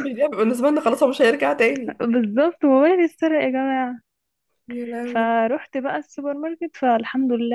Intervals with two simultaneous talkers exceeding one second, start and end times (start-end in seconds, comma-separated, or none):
none